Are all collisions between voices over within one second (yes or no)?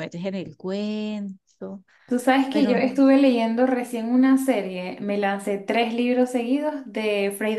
yes